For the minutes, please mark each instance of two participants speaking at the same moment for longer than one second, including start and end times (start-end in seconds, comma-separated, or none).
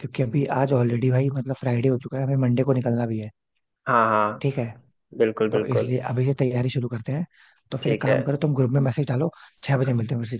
none